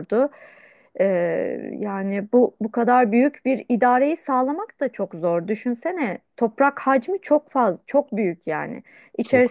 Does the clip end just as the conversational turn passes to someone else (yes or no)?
no